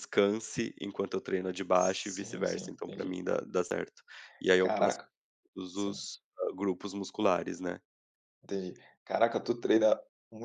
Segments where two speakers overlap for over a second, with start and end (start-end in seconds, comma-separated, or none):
1.7-3.2